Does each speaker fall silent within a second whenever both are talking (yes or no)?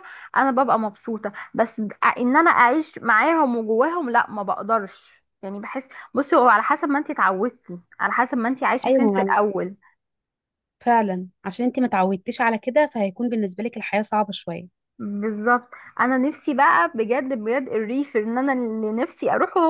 yes